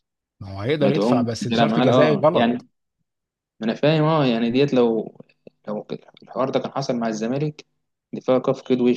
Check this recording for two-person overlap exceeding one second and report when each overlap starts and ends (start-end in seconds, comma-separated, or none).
0.8-2.7